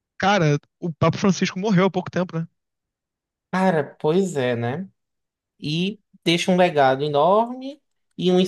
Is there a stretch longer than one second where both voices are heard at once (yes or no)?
no